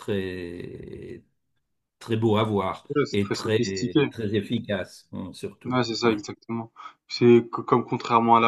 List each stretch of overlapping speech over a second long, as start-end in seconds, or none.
2.9-4.1